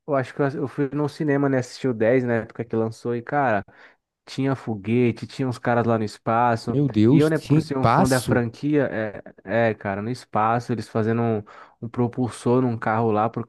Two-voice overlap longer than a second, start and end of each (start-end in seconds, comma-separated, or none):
6.7-8.4